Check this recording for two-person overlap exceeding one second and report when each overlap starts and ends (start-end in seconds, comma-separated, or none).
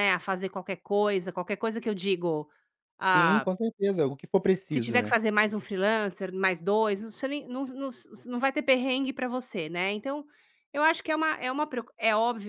none